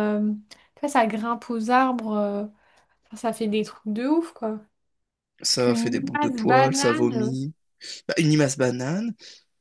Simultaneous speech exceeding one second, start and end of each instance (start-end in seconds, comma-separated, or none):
5.6-7.4